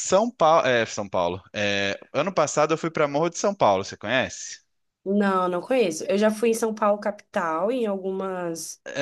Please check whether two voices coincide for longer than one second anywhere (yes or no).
no